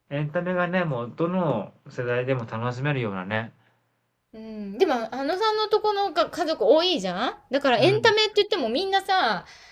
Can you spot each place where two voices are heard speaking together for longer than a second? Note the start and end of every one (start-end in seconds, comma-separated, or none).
none